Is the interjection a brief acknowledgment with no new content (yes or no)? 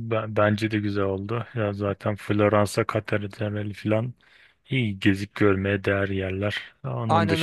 no